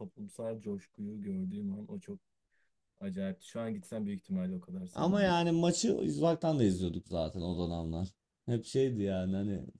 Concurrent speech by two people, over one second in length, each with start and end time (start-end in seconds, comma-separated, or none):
none